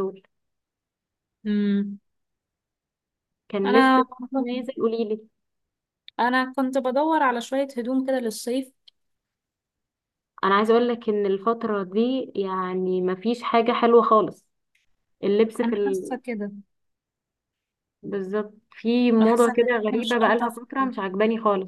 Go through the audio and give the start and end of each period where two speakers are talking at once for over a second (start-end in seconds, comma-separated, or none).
19.2-21.0